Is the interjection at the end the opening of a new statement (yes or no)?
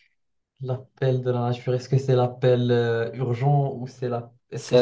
yes